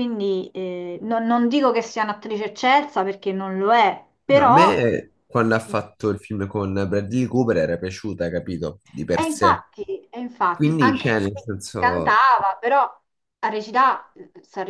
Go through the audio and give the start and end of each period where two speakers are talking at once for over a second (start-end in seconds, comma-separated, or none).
10.5-12.2